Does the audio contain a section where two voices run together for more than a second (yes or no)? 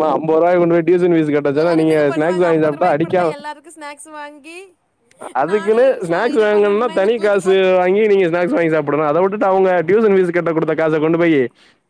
yes